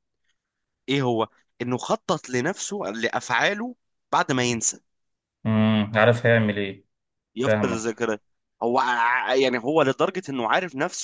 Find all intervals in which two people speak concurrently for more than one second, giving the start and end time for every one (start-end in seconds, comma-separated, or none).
none